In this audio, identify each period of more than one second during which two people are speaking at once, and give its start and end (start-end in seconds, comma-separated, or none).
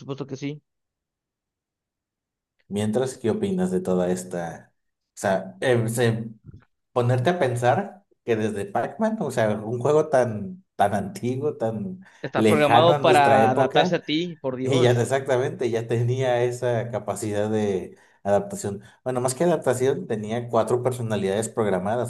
12.4-14.0